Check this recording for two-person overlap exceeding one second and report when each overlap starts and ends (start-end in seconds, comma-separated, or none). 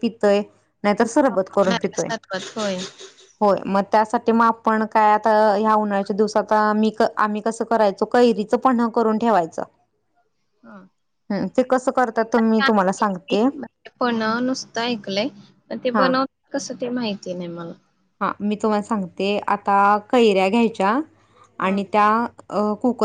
none